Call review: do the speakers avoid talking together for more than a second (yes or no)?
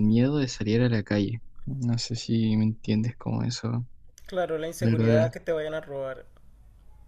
yes